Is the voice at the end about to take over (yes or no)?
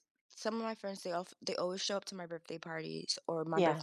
no